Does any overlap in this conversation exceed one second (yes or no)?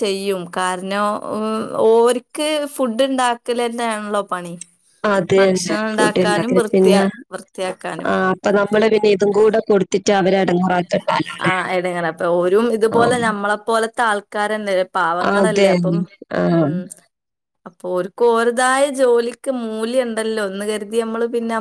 yes